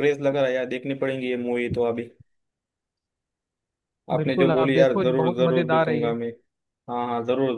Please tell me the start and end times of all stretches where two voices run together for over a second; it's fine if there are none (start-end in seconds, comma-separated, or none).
4.2-6.1